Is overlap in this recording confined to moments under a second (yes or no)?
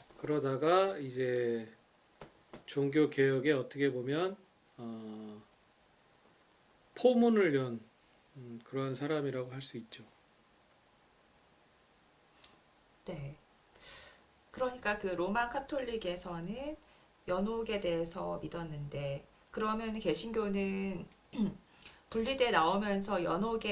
yes